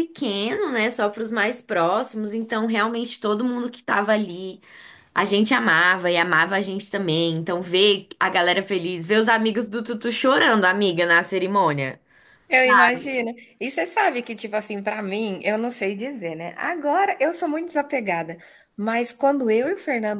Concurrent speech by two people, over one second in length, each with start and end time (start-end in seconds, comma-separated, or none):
none